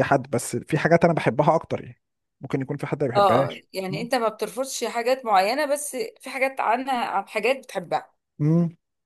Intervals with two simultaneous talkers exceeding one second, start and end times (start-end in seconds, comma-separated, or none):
none